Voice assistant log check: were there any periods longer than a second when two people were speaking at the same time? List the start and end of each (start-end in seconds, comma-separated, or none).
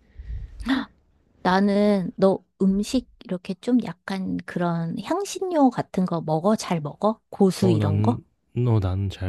none